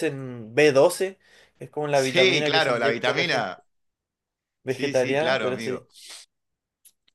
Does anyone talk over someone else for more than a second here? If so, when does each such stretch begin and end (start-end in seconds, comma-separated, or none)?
1.9-3.5, 4.7-5.9